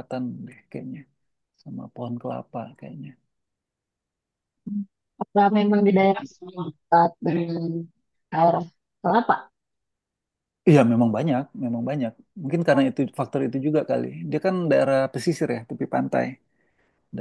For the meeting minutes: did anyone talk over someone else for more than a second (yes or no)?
no